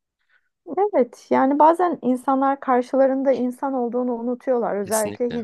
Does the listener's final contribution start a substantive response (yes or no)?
no